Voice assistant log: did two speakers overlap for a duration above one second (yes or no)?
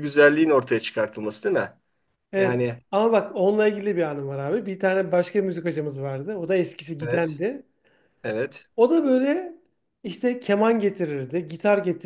no